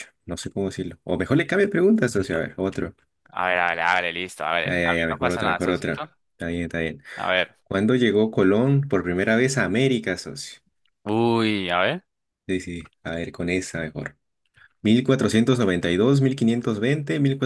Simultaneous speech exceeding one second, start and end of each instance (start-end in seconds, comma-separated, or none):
4.6-6.1